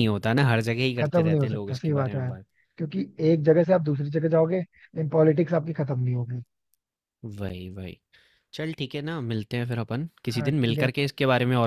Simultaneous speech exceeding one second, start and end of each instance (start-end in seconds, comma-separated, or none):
1.0-2.4